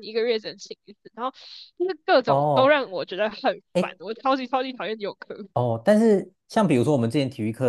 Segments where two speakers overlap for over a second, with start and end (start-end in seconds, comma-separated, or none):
none